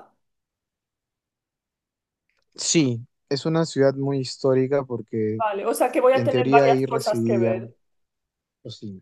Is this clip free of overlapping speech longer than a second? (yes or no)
no